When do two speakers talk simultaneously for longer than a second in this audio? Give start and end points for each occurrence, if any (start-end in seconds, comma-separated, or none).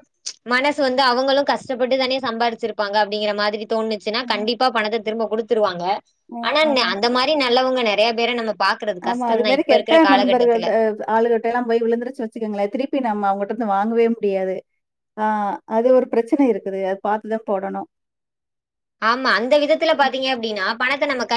9.1-10.6